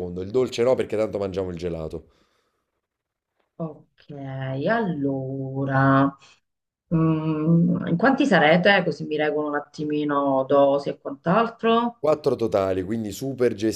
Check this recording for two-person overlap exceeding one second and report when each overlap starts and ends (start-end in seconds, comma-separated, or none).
none